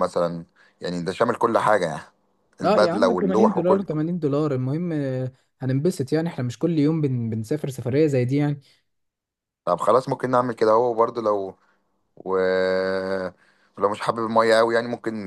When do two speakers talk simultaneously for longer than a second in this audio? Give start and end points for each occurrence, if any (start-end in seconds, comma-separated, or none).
2.6-3.9